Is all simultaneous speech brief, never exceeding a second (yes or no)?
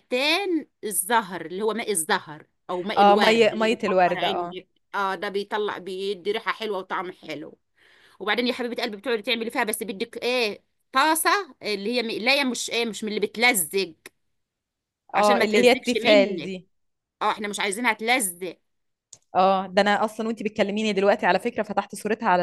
no